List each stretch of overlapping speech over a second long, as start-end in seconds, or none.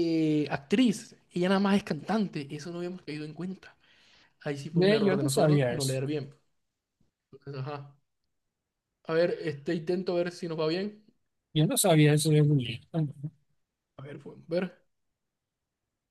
4.7-6.0